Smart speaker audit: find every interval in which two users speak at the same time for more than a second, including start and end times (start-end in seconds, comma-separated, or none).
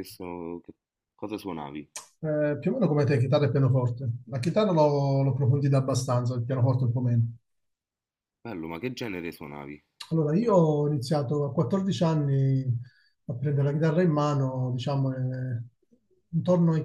none